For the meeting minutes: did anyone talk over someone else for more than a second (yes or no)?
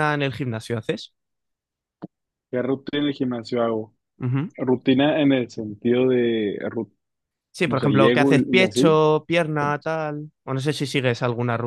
yes